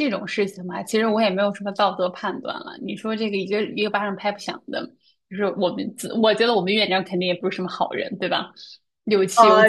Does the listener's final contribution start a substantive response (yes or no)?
yes